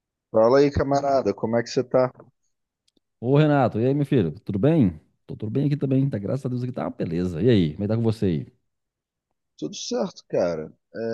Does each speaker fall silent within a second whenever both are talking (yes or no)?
yes